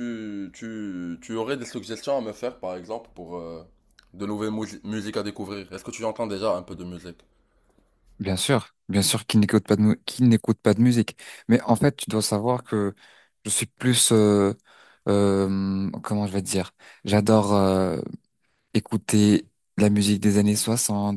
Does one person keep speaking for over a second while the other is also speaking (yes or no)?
no